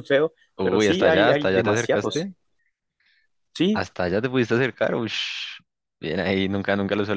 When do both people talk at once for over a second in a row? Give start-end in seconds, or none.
0.6-2.3